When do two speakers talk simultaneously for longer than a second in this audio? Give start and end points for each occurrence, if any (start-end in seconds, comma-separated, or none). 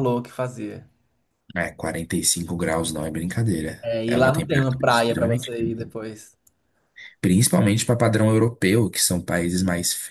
3.8-5.4